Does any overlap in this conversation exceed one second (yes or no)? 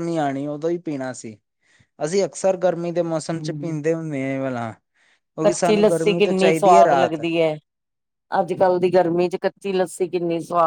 yes